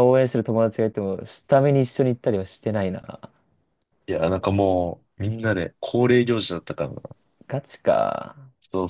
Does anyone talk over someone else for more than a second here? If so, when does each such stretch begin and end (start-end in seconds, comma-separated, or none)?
none